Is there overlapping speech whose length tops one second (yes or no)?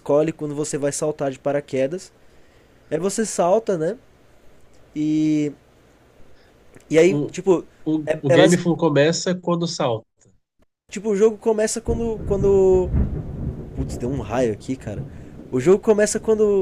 no